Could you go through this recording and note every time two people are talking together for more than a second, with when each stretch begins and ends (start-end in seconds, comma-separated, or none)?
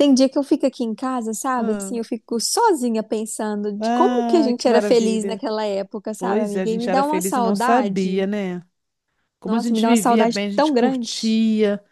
3.8-5.4, 6.2-8.3, 9.4-11.1